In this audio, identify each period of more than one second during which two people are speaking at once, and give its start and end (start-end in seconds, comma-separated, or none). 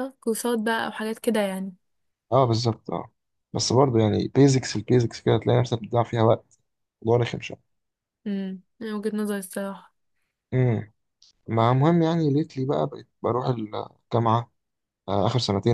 none